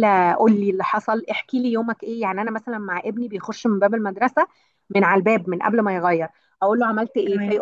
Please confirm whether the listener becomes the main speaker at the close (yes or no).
no